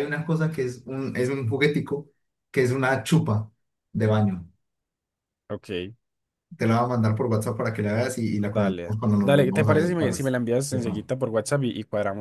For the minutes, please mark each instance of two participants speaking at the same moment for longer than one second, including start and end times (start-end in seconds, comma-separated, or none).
8.4-10.3